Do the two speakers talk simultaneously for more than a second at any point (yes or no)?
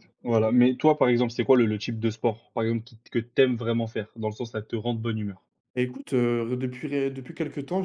no